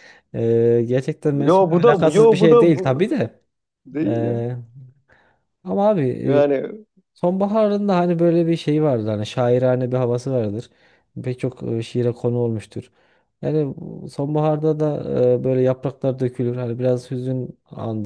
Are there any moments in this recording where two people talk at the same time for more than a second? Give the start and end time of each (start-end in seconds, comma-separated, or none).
1.5-3.1